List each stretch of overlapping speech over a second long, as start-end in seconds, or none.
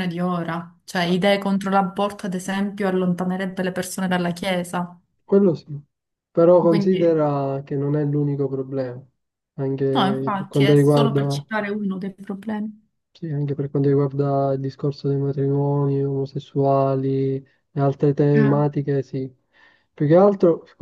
9.9-11.4